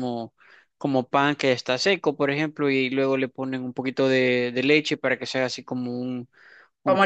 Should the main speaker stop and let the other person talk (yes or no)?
yes